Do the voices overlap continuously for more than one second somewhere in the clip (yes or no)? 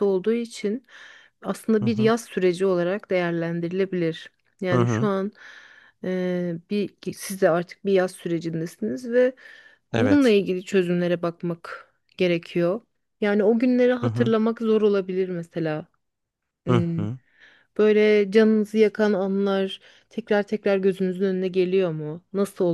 no